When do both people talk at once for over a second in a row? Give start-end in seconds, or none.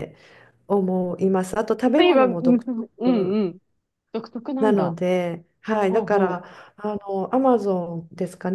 1.9-3.4